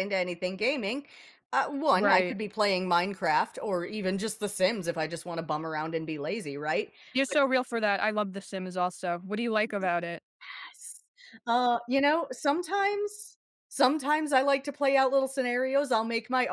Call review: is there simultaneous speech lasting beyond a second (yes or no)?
no